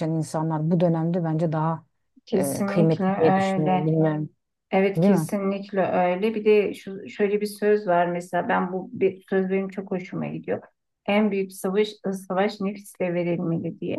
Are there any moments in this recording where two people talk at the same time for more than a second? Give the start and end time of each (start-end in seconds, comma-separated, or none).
2.4-3.9